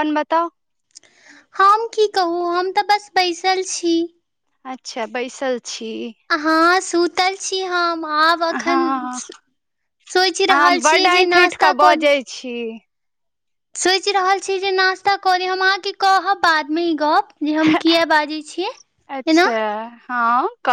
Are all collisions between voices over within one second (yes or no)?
no